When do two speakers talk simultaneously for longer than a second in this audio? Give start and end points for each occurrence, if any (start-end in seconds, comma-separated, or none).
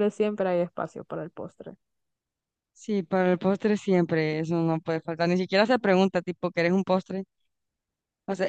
none